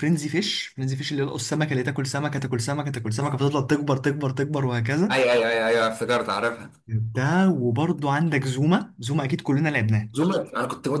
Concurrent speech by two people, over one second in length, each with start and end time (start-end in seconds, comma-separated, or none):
none